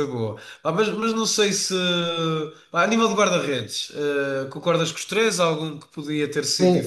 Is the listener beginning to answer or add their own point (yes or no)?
yes